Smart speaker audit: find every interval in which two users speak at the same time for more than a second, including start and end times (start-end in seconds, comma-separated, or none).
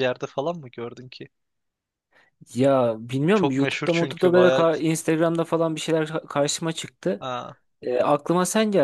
3.3-4.7